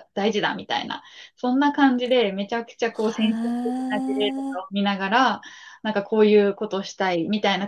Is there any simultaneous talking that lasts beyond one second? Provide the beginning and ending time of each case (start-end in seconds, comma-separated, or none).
3.2-4.8